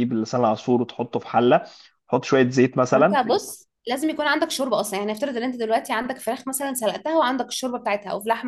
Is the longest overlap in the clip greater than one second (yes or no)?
no